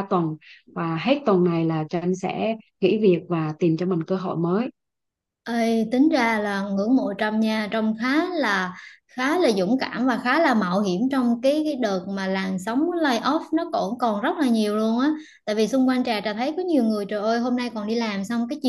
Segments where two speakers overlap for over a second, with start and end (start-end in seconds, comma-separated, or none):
none